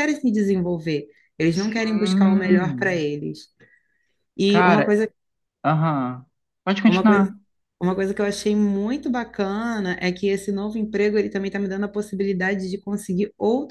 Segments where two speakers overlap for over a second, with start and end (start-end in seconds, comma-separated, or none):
1.6-3.0